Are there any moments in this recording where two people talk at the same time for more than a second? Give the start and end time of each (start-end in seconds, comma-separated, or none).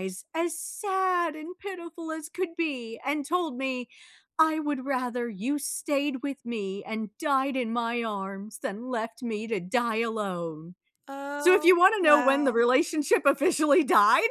11.4-12.7